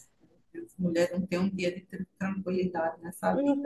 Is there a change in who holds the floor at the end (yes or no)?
yes